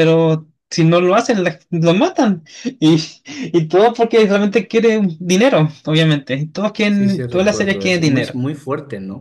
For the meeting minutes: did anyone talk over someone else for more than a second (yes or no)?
yes